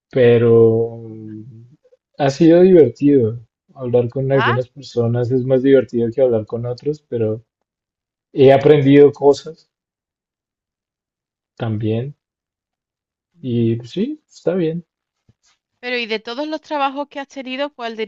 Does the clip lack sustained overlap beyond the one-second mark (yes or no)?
yes